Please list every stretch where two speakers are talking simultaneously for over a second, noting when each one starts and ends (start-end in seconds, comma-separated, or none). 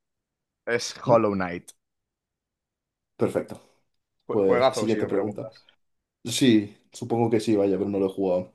4.3-5.5